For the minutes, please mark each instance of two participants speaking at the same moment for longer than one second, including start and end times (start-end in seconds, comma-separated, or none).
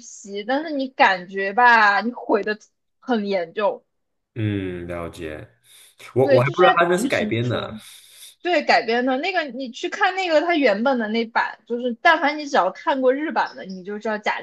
6.2-7.7